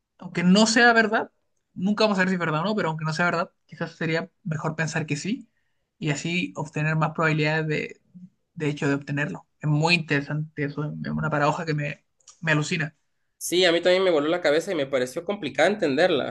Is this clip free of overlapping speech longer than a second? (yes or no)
yes